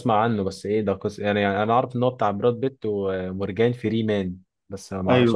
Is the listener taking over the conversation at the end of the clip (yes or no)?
yes